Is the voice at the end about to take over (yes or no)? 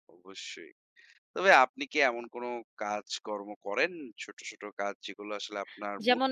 yes